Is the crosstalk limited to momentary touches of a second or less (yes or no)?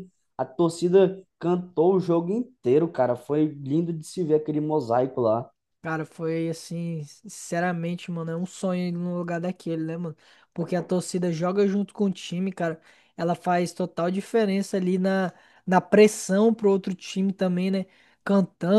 yes